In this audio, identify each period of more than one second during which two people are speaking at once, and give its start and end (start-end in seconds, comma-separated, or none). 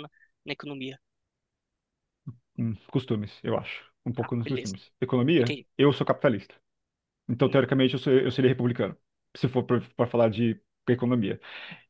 none